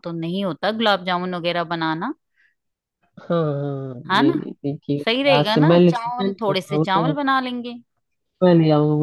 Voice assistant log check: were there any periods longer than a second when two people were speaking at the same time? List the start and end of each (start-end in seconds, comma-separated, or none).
5.0-7.1